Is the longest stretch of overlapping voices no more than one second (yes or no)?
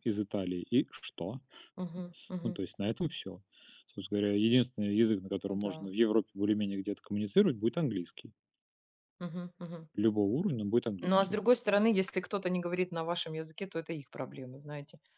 yes